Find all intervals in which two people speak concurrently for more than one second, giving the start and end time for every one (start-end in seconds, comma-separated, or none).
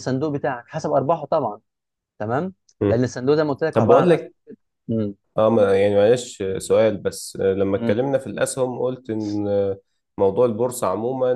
none